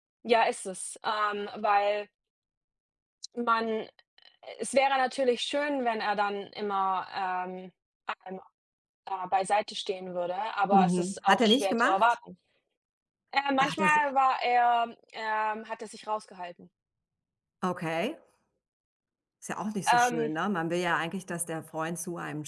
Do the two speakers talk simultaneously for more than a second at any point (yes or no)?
yes